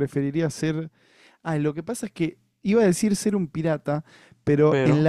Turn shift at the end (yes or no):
no